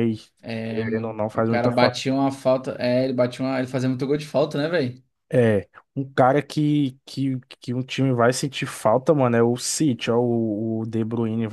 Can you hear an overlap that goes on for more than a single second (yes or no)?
yes